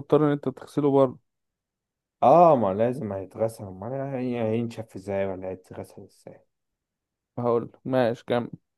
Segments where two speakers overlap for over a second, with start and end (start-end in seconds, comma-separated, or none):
none